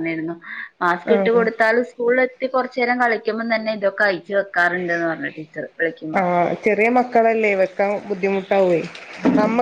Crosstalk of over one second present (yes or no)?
no